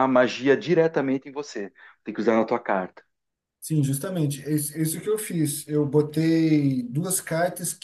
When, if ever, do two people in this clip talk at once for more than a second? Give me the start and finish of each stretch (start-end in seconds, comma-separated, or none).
none